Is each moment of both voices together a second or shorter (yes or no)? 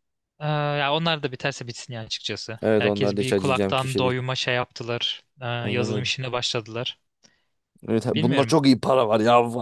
no